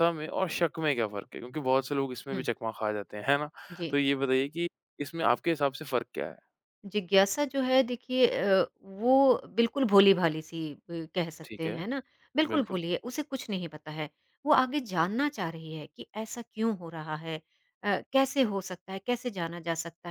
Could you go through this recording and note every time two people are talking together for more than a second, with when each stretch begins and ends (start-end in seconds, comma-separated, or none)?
none